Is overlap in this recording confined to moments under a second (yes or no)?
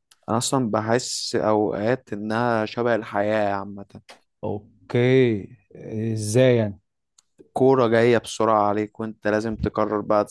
yes